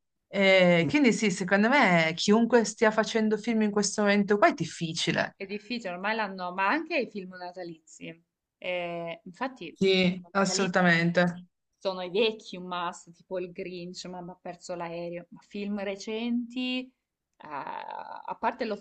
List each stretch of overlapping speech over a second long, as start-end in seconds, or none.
9.7-11.1